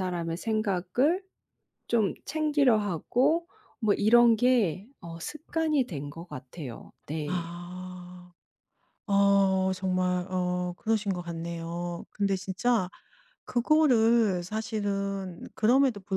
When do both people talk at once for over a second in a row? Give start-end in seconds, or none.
none